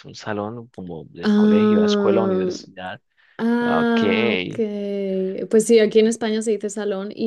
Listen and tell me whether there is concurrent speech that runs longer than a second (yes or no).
yes